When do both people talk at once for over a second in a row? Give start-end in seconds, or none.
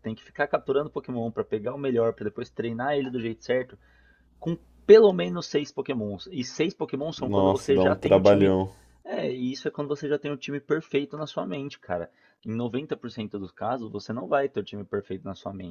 7.2-8.6